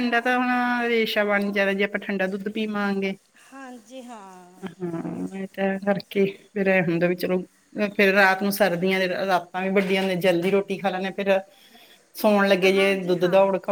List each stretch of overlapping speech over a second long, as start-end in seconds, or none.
none